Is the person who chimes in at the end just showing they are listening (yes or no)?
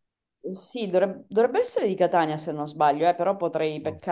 no